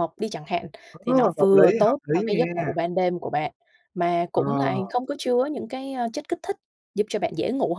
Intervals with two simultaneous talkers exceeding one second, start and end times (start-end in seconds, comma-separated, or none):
0.9-2.7